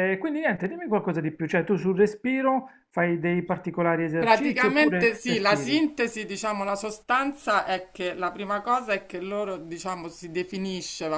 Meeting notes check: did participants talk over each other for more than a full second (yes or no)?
yes